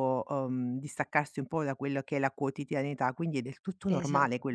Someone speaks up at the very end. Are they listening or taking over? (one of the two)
listening